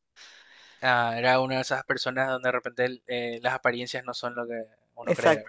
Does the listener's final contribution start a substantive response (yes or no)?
yes